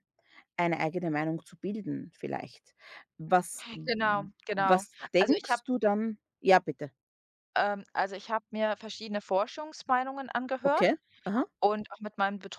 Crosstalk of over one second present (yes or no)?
yes